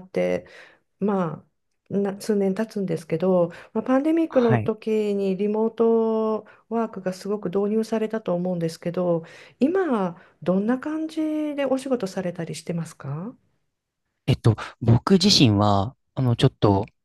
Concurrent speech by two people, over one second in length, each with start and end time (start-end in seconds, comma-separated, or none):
none